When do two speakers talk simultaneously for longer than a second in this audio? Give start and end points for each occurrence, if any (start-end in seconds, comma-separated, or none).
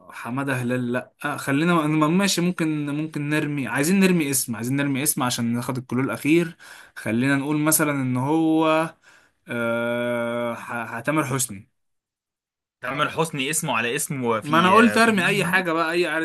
14.4-15.6